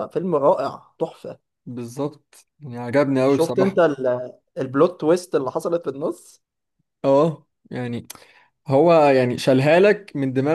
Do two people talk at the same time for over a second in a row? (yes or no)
no